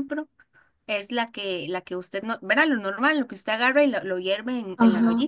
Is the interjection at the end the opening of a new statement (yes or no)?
yes